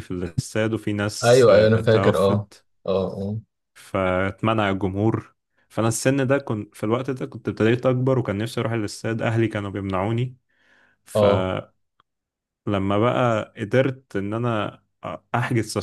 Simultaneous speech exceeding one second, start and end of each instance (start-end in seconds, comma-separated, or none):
1.2-2.5